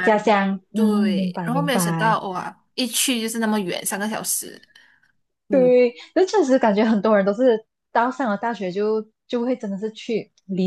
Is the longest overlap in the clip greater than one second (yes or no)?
yes